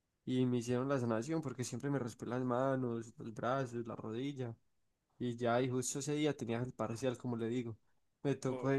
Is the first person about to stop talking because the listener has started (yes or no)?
no